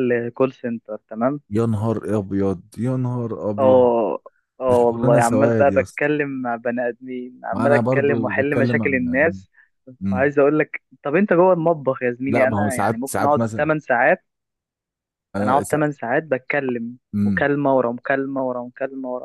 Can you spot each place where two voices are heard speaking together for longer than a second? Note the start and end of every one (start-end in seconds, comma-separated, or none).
4.7-6.1, 7.5-9.4, 12.3-13.7